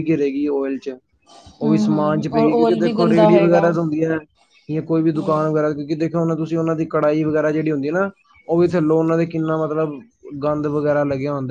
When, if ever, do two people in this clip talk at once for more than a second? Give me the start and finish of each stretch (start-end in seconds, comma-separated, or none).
1.6-3.6